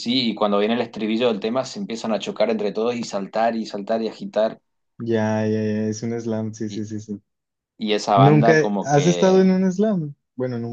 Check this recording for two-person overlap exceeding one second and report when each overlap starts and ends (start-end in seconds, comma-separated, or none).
8.1-9.6